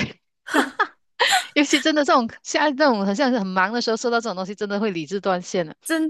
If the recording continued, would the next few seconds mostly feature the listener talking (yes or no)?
no